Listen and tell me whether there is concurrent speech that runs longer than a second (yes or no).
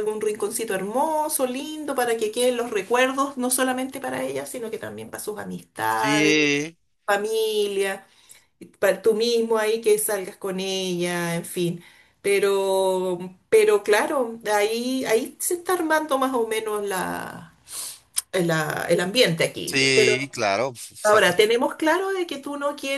no